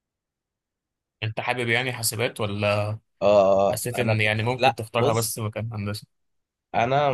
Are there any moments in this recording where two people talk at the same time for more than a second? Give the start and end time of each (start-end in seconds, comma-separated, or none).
3.7-5.3